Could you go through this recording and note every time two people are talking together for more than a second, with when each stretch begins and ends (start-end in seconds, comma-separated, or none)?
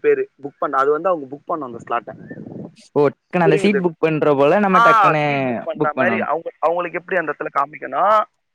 none